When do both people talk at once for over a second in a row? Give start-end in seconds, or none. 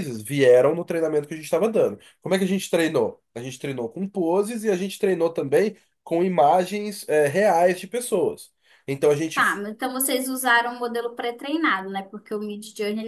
none